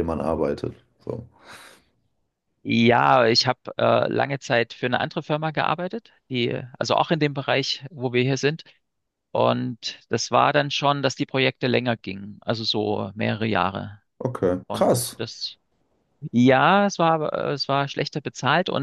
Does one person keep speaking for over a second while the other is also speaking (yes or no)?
no